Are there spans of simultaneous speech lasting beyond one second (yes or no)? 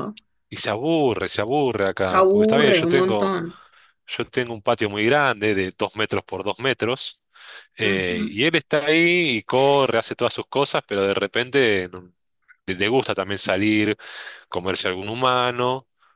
yes